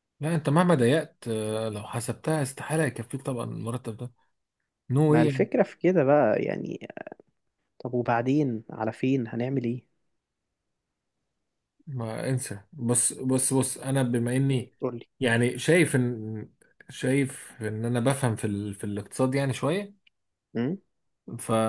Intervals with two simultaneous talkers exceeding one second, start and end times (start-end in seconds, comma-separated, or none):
none